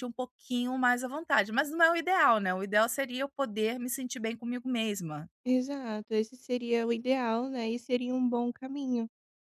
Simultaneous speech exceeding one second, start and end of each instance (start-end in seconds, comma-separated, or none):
none